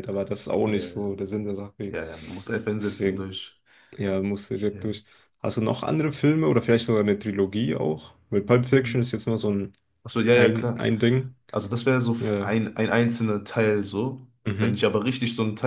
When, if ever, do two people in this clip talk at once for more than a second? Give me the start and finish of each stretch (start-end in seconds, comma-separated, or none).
none